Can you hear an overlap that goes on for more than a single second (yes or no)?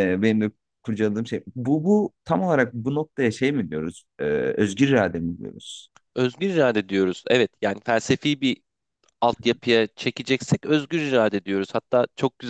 no